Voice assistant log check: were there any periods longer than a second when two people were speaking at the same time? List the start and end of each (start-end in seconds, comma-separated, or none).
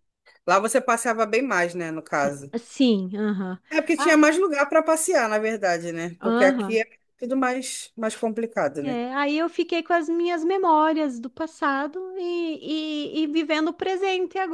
none